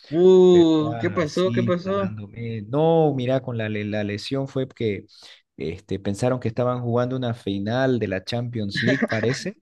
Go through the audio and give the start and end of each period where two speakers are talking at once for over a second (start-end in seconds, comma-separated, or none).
0.5-2.1